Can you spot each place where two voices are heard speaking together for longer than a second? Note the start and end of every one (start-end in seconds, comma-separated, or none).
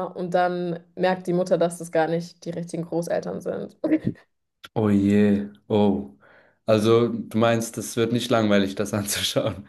none